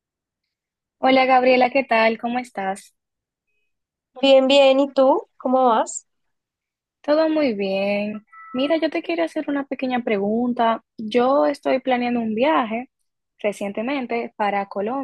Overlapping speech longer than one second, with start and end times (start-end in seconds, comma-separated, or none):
none